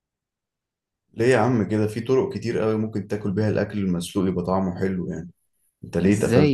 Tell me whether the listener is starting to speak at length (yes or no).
yes